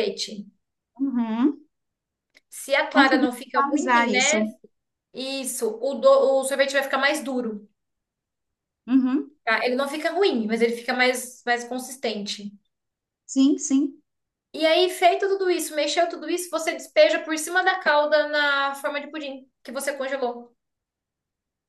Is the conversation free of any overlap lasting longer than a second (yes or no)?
no